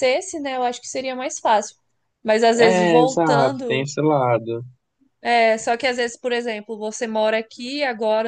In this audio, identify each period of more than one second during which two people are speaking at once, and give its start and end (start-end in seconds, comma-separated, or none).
2.6-3.9